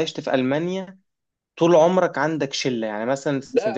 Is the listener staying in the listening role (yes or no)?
yes